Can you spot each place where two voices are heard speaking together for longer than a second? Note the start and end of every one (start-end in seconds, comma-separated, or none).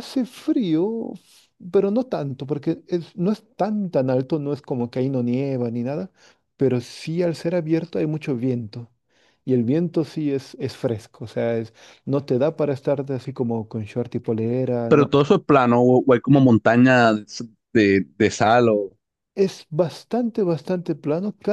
none